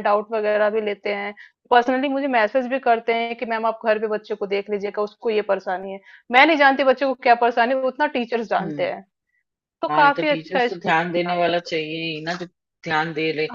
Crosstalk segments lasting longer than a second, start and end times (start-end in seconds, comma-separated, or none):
9.9-11.8